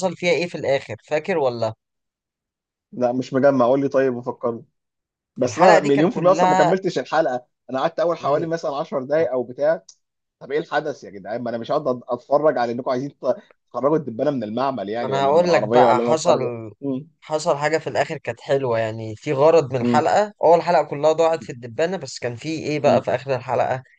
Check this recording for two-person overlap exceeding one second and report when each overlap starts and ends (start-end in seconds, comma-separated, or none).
5.4-6.7, 15.0-16.4